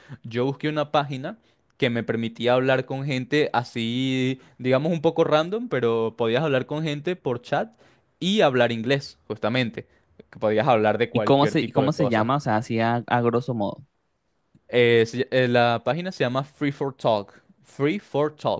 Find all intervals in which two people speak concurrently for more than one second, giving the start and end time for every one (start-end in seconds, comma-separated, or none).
11.1-12.3